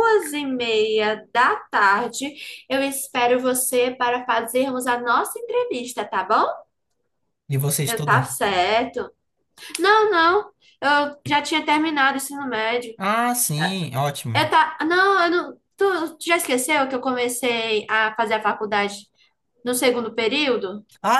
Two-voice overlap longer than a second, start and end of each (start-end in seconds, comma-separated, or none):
none